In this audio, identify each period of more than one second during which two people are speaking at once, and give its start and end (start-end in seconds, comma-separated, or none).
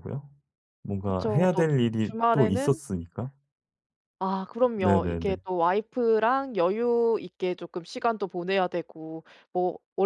1.0-2.8